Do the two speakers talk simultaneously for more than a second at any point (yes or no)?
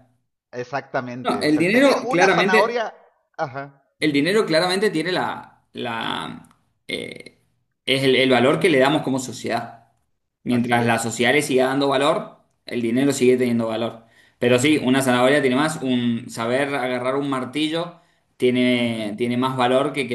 yes